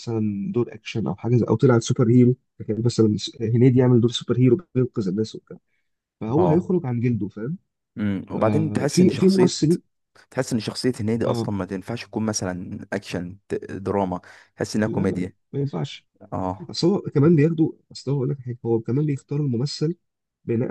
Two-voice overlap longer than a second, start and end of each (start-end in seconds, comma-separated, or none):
8.4-9.6